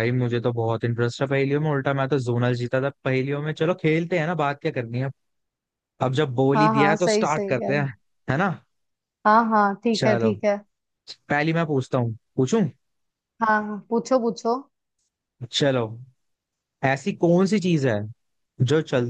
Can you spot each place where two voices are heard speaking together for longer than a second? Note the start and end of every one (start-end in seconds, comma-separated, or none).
6.5-7.8